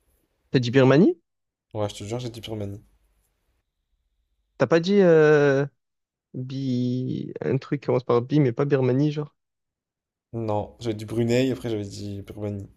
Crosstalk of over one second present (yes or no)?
no